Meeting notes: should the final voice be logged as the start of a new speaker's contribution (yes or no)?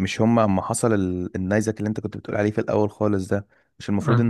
no